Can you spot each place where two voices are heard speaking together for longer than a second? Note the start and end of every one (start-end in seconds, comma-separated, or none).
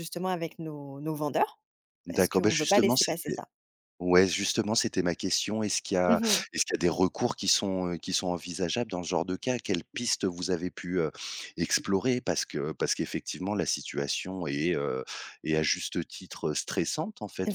2.1-3.4